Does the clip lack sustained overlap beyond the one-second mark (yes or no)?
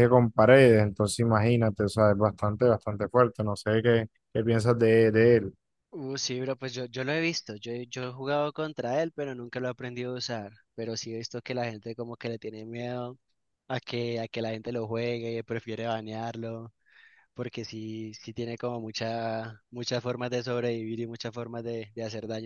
yes